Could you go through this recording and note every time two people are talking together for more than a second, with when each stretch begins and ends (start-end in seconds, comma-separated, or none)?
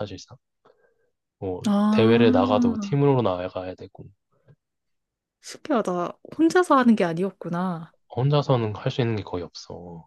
1.7-3.0